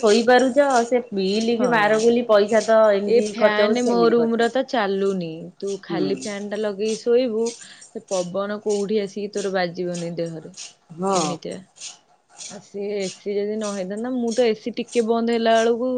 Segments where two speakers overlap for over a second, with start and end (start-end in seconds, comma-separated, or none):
3.1-5.2